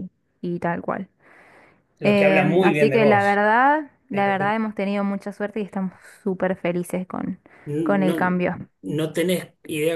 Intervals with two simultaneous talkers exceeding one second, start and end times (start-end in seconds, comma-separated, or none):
2.0-3.4